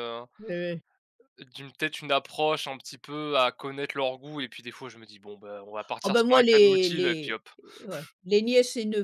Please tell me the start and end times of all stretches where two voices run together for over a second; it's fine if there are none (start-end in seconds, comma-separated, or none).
6.0-7.4